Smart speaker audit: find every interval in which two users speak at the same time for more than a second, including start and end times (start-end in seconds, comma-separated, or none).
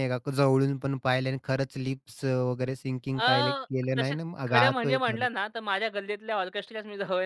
3.2-5.3